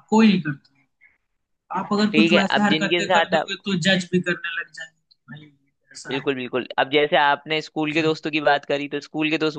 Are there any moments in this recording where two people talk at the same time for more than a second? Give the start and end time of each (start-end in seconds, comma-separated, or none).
2.1-3.5